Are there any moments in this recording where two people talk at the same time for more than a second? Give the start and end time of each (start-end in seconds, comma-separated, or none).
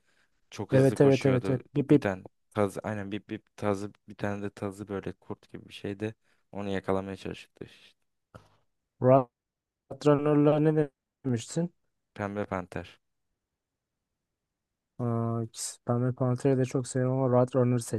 0.7-2.1